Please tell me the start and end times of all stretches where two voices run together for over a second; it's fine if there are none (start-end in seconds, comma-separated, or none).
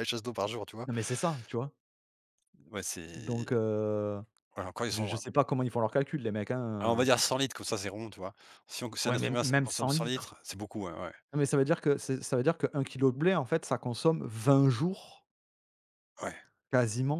9.1-10.3